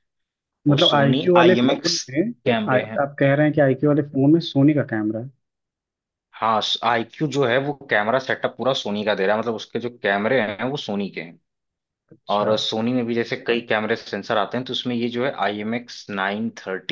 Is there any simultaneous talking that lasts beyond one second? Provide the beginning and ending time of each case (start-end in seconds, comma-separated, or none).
0.7-2.0